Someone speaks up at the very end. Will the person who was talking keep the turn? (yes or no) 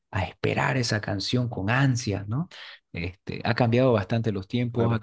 no